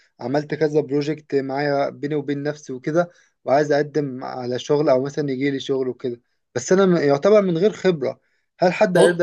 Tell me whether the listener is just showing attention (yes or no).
no